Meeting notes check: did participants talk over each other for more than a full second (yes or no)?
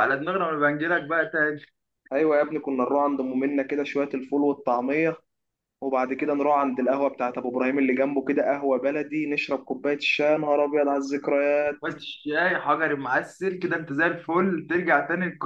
no